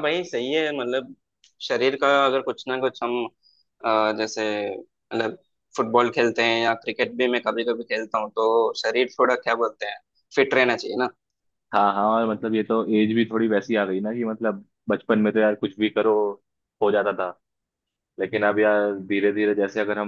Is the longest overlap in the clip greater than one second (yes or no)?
no